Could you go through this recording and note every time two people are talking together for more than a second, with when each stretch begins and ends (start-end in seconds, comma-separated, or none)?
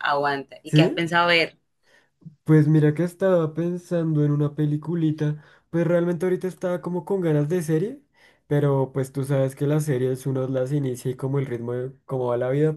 none